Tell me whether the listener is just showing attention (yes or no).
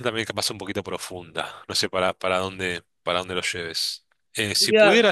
yes